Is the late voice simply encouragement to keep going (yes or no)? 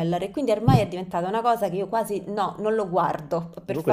no